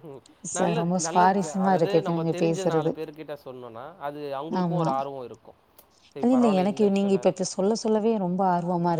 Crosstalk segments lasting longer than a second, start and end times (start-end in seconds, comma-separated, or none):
0.6-2.9